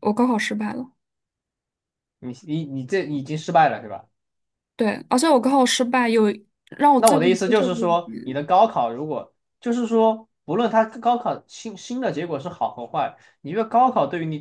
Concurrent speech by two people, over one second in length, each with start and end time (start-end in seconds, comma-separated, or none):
7.0-8.4